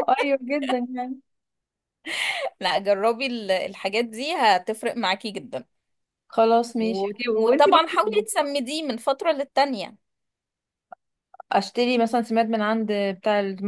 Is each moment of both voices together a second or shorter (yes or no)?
no